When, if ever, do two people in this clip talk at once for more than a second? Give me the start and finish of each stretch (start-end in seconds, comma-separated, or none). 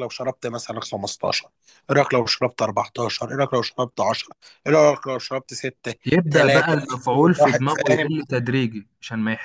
6.3-8.1